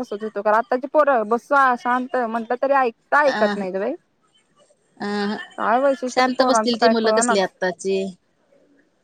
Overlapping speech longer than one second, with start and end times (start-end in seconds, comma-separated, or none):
6.1-7.5